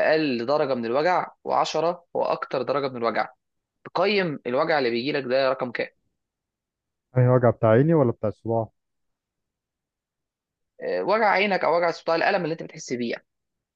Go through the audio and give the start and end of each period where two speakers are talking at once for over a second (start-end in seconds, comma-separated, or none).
none